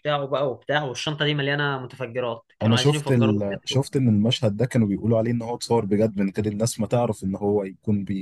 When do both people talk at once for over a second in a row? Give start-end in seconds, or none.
2.6-3.9